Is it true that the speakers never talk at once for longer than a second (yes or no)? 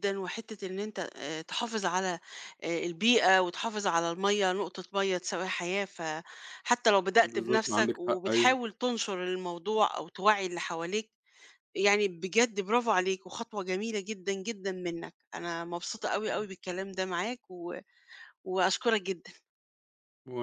no